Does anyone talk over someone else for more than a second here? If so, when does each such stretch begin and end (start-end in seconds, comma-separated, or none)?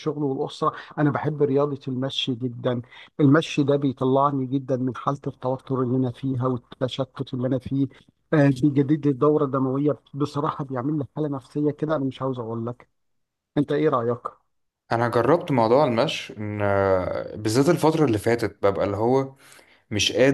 none